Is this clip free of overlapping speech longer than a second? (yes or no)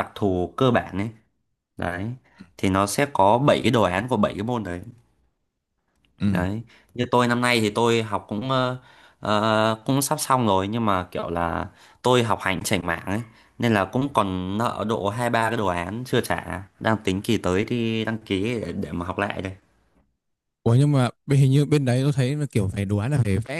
yes